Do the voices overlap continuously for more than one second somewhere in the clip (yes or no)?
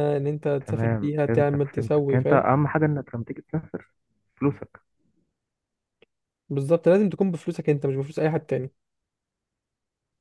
yes